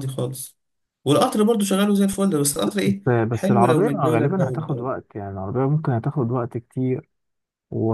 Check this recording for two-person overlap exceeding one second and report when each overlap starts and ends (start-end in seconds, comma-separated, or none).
3.0-4.9